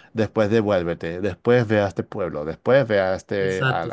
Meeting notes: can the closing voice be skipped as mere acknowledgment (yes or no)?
no